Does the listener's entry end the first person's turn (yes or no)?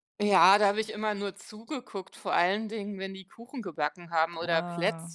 no